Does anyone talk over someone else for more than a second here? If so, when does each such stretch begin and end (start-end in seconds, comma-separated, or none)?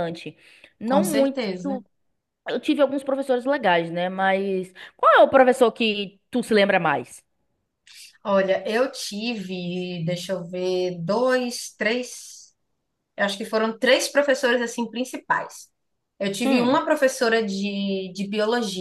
none